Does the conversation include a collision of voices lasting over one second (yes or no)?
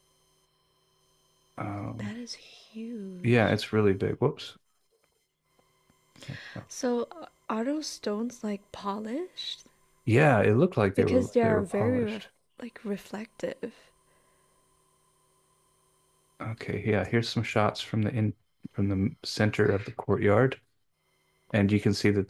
yes